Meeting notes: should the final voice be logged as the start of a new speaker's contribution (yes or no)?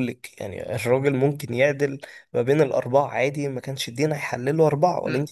yes